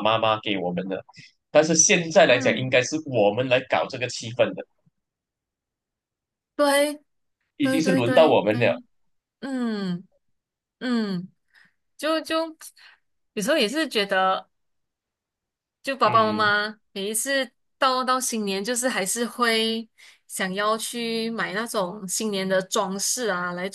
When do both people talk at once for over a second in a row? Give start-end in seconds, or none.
7.6-8.8